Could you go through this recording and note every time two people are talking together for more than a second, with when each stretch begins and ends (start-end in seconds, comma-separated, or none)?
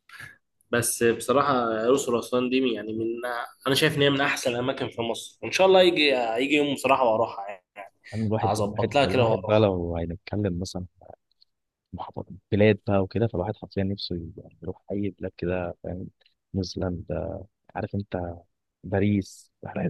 8.4-9.7